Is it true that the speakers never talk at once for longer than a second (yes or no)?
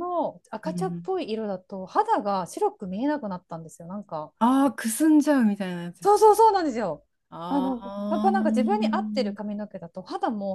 no